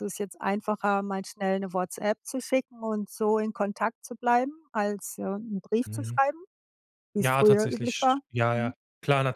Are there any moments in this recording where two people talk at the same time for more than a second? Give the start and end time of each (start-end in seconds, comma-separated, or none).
7.2-8.7